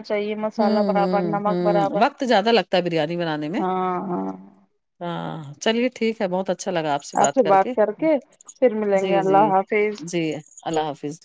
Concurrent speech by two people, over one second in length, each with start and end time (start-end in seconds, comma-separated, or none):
0.6-2.0